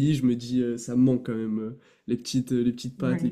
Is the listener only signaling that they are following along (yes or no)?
yes